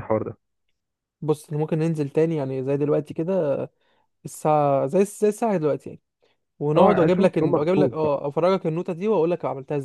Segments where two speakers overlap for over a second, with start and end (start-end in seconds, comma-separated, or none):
6.8-8.2